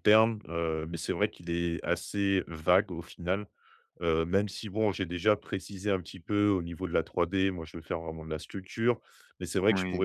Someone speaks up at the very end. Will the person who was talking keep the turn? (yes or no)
yes